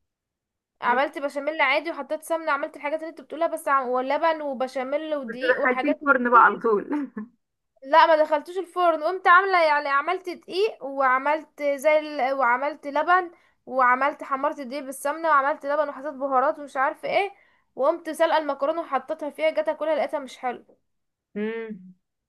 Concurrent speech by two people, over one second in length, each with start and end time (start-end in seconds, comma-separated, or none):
5.3-6.6